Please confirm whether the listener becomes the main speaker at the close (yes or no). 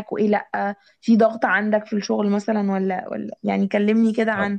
yes